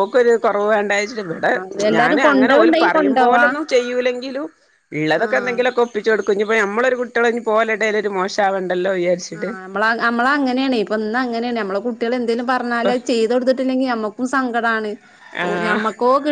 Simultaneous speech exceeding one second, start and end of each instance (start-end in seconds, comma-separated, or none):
2.0-3.5